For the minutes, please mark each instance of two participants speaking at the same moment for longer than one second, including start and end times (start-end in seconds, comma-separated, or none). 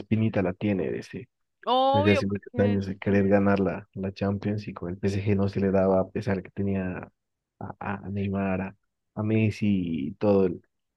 1.9-3.2